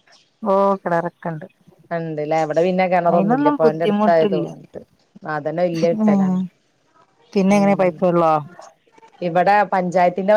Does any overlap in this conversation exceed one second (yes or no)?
yes